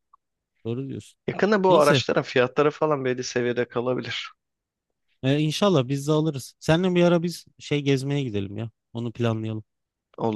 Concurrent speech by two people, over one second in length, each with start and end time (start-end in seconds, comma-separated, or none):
none